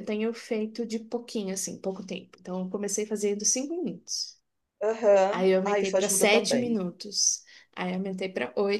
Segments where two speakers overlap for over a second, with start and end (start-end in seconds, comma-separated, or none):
5.3-6.7